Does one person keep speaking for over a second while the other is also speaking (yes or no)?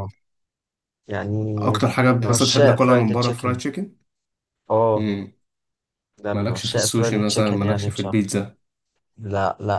yes